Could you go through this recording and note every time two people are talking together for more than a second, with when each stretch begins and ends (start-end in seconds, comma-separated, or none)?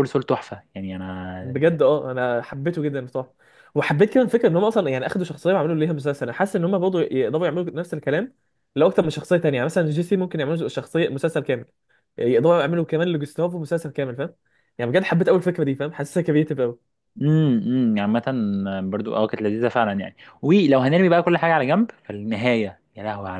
none